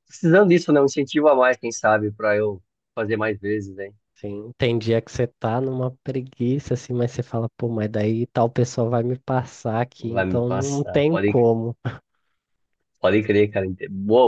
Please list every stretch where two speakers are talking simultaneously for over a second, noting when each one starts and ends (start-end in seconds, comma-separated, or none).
10.0-11.5